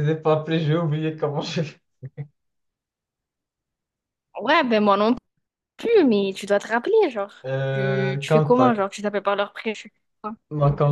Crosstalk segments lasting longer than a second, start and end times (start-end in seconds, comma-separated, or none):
7.5-8.8